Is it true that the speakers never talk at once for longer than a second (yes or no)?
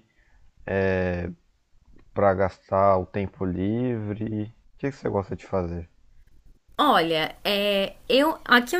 yes